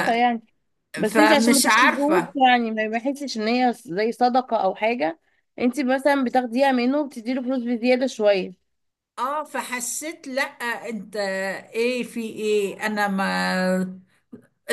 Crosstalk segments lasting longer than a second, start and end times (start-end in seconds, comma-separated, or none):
1.1-2.3